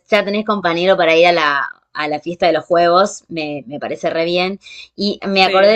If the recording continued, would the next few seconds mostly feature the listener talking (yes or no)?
no